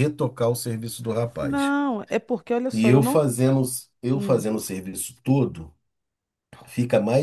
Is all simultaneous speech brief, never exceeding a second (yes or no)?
yes